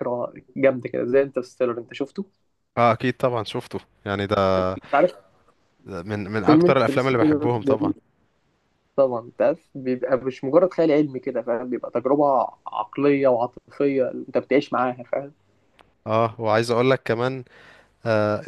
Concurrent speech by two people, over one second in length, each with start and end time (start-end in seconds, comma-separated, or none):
6.5-7.9